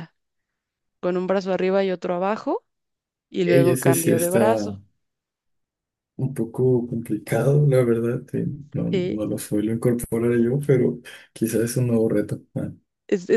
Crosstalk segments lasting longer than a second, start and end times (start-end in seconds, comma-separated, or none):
3.5-4.8